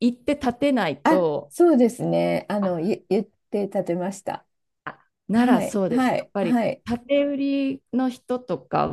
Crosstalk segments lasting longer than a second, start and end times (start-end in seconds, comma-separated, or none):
5.3-6.8